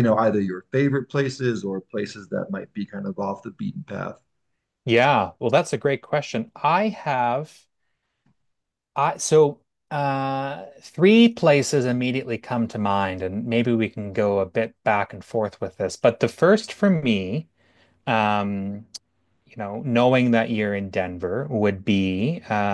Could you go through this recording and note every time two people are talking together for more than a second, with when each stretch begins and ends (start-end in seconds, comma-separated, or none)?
none